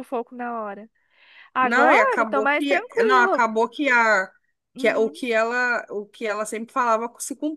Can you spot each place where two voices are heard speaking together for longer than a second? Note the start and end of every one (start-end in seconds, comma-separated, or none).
1.6-3.5